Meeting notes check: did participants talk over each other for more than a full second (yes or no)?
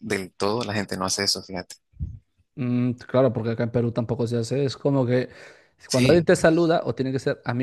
no